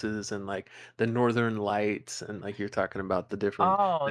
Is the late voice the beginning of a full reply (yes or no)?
yes